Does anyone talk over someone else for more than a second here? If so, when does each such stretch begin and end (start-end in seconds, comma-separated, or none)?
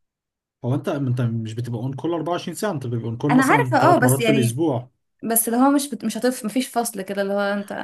3.3-4.6